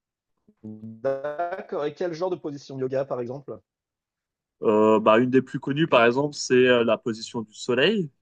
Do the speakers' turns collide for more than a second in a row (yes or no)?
no